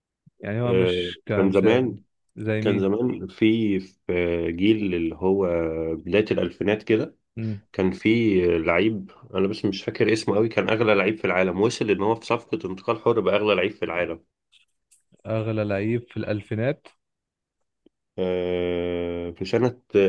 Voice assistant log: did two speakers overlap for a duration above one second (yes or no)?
yes